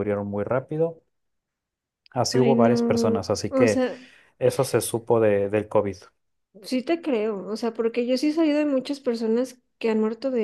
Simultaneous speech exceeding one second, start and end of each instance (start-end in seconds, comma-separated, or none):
2.3-3.8